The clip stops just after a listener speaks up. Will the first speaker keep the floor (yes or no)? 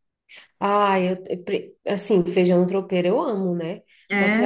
yes